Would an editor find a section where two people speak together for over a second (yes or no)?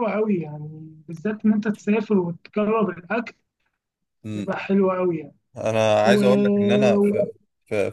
yes